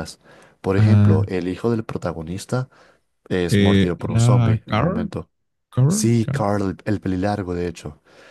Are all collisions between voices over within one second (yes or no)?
no